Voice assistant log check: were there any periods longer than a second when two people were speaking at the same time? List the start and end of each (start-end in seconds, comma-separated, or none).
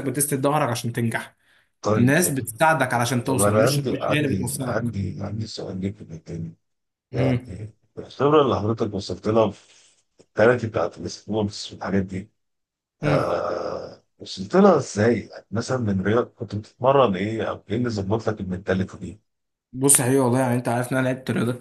3.2-4.9